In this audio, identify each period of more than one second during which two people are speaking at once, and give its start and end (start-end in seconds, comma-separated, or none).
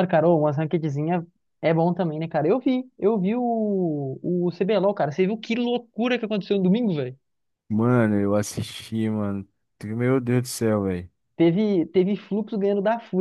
none